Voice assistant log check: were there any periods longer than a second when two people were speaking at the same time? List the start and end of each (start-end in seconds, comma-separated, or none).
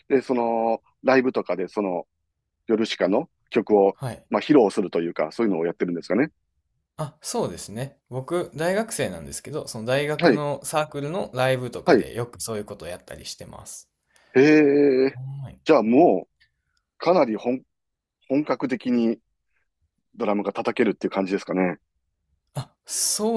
none